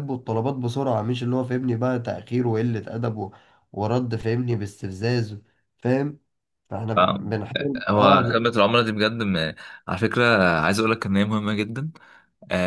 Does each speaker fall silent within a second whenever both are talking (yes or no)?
yes